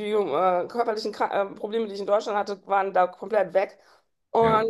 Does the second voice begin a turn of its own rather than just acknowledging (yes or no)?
no